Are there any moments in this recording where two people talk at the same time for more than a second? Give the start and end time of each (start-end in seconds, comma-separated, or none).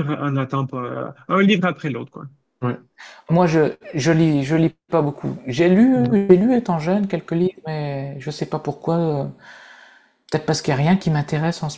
none